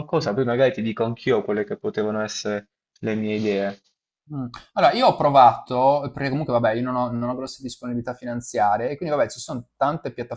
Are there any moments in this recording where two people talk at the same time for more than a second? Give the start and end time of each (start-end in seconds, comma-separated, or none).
none